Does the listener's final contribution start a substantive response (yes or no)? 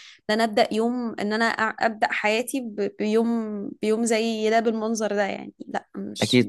yes